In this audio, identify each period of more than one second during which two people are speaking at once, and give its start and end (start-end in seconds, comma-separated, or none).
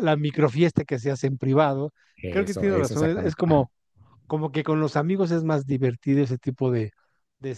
2.3-3.7